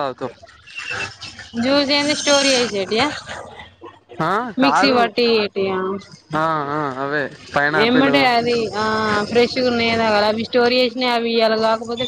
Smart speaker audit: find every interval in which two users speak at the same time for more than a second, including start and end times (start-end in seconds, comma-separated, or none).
none